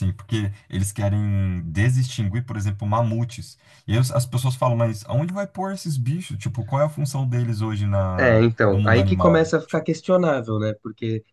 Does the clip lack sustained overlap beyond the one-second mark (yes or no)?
no